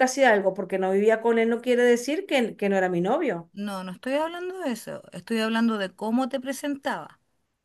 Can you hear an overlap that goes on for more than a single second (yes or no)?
no